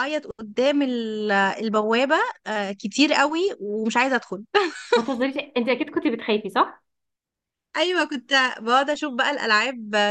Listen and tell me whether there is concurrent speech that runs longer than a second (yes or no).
no